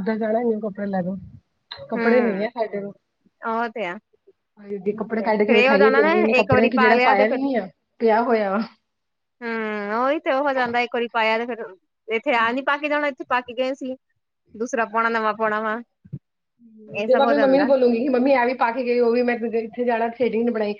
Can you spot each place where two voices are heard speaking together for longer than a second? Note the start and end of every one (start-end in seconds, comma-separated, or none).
4.9-7.4